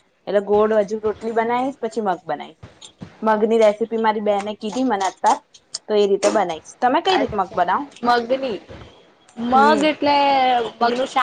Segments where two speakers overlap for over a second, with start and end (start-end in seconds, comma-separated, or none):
none